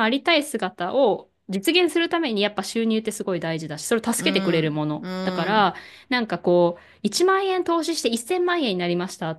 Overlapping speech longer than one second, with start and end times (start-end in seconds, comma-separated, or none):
4.2-5.8